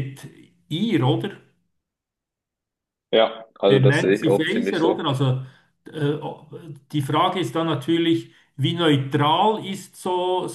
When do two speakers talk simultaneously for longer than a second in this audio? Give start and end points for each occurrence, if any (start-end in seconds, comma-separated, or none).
3.7-5.1